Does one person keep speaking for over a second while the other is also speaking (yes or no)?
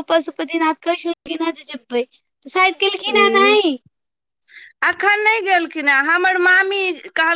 no